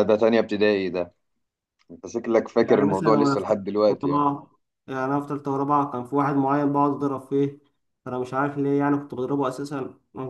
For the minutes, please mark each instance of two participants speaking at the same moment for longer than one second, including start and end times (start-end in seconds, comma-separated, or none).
2.6-4.3